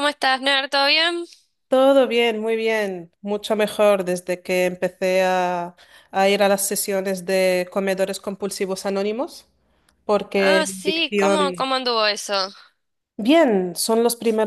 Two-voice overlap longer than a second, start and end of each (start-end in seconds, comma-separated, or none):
10.3-11.7